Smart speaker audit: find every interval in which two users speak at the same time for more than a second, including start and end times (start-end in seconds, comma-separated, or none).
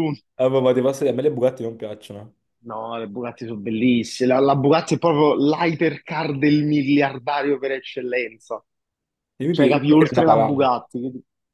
9.5-10.7